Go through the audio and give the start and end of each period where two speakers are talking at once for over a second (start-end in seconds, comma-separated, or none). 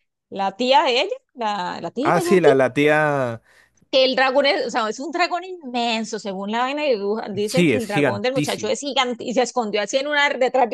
7.4-8.8